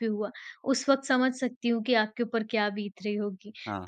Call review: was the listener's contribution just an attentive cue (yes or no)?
yes